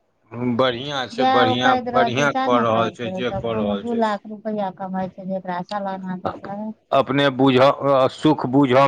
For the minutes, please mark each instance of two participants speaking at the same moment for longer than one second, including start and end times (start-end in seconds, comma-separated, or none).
1.2-4.0